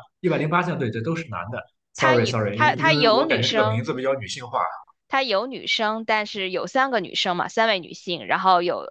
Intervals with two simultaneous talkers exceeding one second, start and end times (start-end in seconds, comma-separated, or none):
1.9-3.9